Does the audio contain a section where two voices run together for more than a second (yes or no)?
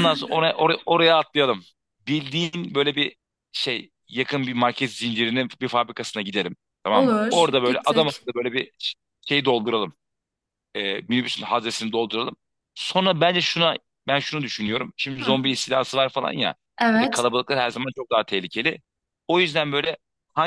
yes